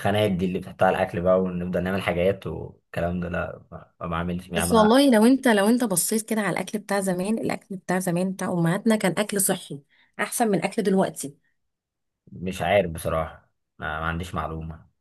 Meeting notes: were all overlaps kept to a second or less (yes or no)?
yes